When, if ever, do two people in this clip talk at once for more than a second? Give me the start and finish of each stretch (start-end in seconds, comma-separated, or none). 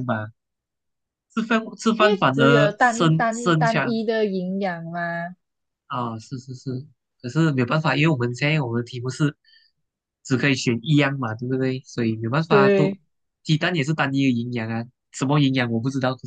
2.0-4.0